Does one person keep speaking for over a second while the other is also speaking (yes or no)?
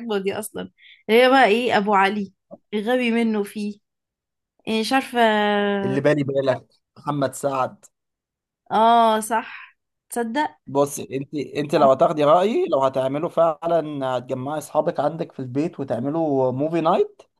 no